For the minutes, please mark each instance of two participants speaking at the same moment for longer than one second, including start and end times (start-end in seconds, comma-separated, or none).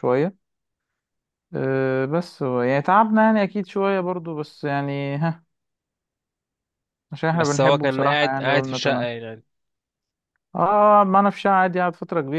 7.3-9.1